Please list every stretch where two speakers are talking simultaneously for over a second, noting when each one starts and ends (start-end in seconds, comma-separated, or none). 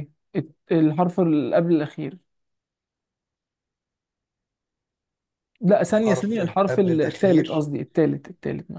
6.0-7.7